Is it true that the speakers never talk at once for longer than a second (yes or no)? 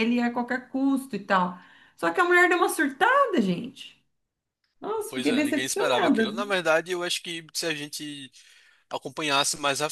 no